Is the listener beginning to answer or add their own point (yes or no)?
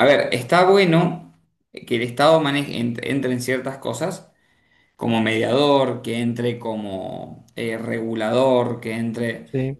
no